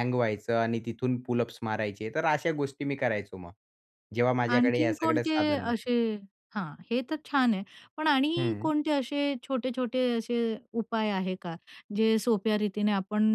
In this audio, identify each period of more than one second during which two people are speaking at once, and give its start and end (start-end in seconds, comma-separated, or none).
4.5-5.9